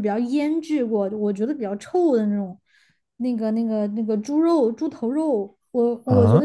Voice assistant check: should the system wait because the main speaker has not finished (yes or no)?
yes